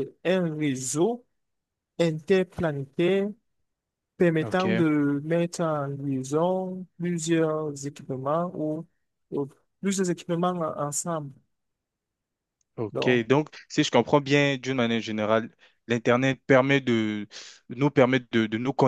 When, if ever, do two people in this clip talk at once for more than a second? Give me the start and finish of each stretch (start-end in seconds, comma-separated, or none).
none